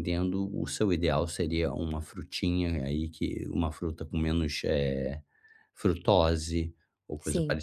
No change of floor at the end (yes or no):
yes